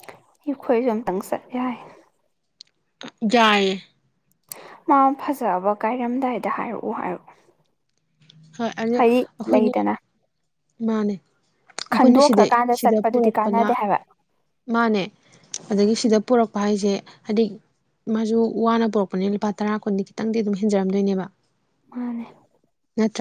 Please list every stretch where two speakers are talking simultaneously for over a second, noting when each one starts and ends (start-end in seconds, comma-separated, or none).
11.9-13.7